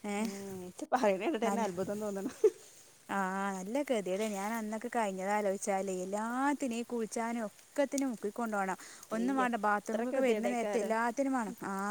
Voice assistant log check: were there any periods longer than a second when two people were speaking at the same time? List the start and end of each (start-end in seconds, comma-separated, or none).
9.2-10.9